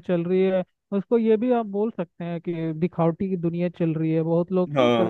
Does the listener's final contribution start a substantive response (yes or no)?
no